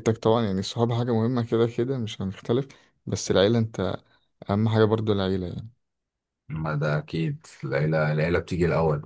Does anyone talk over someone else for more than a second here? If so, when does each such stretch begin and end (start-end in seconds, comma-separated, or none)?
none